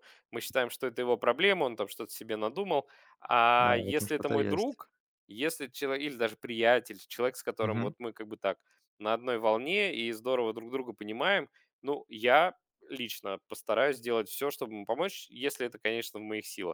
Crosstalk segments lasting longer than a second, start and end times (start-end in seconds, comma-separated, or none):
3.6-4.8